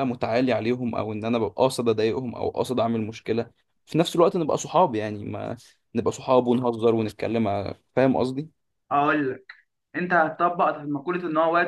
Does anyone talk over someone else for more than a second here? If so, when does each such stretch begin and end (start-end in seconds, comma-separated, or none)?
none